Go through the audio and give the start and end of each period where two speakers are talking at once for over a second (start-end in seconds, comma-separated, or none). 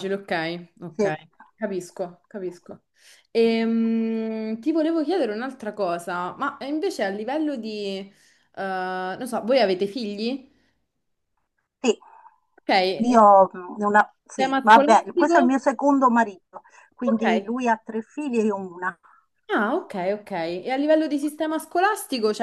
14.3-15.6